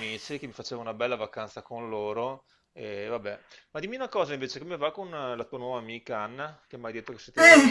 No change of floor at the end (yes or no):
yes